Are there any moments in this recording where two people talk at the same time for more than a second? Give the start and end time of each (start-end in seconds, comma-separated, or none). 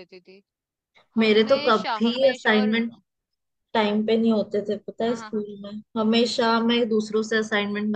1.2-2.8